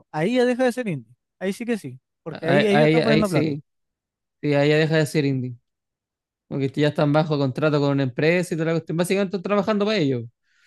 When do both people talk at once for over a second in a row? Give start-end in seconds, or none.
2.3-3.6